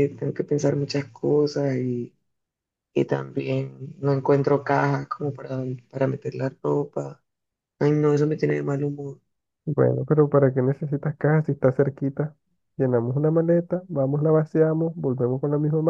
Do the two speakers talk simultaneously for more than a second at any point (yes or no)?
no